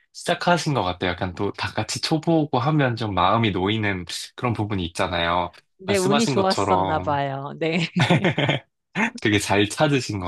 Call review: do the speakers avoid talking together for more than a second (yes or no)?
no